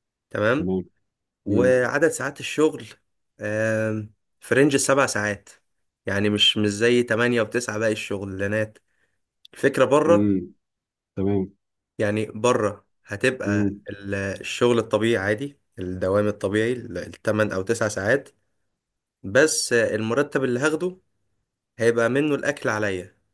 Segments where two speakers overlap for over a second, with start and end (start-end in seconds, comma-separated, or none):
none